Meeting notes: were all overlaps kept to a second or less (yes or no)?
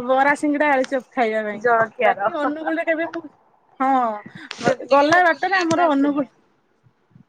no